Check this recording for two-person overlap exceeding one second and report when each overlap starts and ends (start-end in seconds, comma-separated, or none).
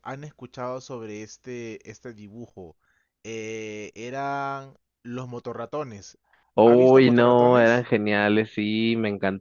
6.6-7.8